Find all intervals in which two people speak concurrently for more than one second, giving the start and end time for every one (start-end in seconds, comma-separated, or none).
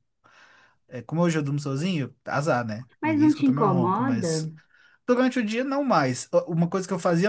3.0-4.5